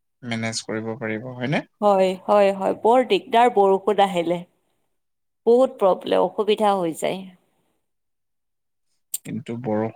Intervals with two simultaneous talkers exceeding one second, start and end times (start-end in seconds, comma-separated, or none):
none